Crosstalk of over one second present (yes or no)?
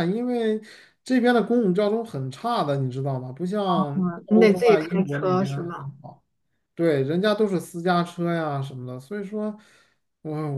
yes